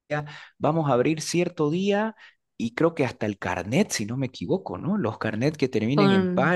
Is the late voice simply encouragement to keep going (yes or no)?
yes